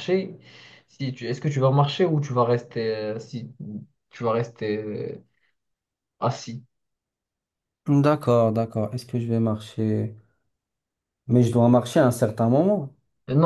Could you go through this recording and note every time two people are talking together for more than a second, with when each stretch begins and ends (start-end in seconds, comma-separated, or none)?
none